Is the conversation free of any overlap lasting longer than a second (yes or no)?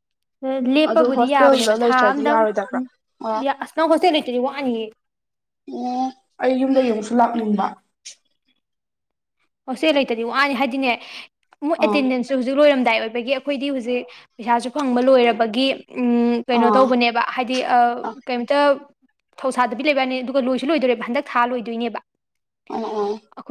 no